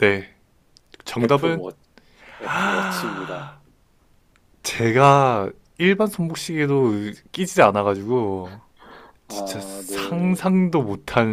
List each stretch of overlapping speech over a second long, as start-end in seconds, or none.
9.3-10.5